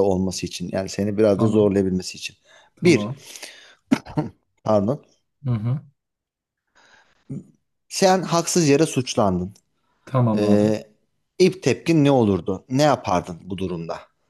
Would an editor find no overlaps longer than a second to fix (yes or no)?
yes